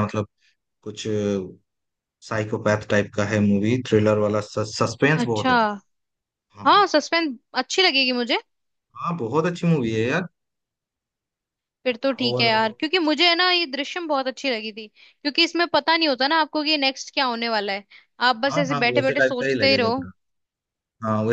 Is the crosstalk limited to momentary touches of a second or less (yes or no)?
no